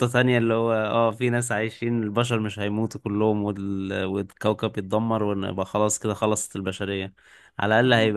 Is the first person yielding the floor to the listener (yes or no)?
no